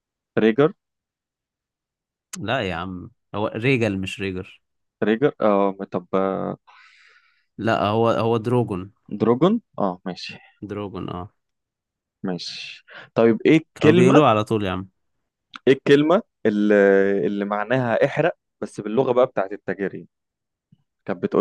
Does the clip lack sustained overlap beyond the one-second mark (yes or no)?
yes